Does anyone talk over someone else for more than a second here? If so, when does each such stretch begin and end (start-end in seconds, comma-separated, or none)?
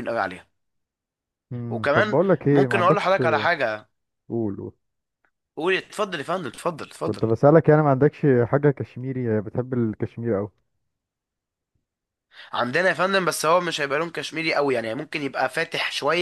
1.7-3.2